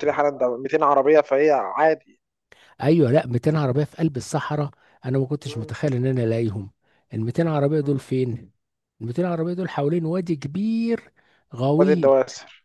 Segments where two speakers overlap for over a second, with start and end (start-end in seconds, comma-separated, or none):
none